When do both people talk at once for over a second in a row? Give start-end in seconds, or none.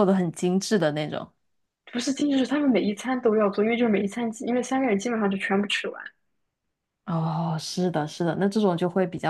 none